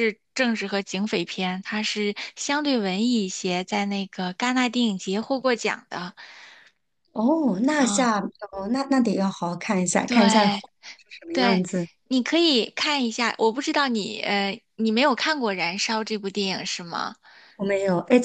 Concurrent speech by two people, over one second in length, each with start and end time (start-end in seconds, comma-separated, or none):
none